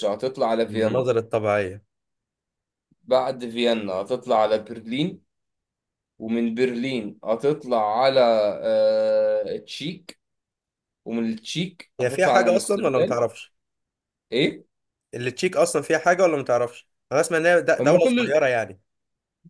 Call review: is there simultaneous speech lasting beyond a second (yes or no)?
yes